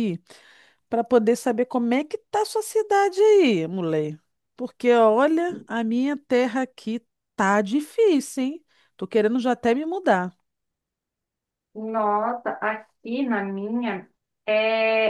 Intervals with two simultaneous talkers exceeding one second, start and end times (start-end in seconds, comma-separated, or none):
none